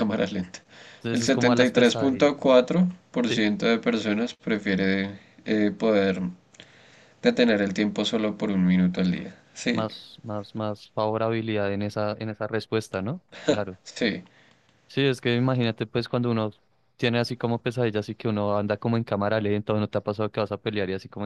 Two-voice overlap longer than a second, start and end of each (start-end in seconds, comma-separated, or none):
1.1-2.3